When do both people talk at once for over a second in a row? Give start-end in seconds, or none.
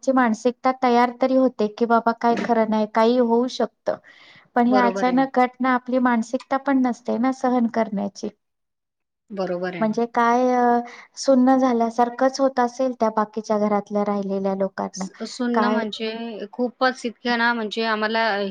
none